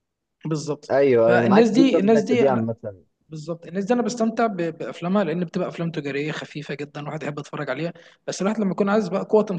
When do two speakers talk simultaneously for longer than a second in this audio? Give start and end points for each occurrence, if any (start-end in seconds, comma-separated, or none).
0.9-2.5